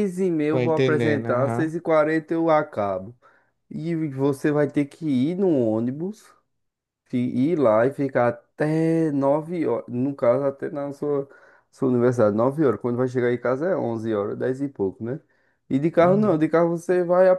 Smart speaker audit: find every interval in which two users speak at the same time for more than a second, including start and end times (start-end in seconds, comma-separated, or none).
0.5-1.7